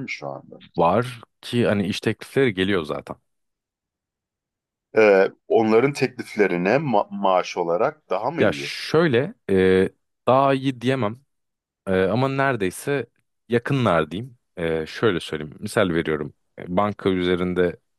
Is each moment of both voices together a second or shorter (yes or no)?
yes